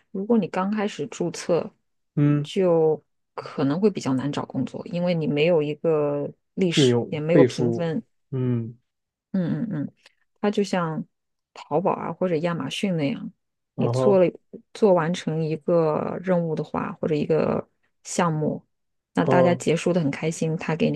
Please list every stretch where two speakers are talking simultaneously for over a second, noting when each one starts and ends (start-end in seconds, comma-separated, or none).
6.7-8.0